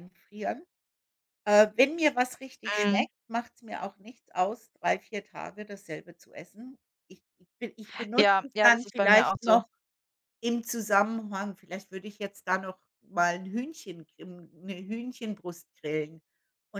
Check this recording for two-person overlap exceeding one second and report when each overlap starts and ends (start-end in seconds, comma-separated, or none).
8.2-9.6